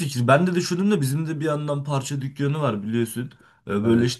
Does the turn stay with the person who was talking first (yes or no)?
yes